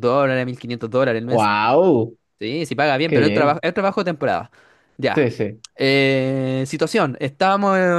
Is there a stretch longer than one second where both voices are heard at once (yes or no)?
no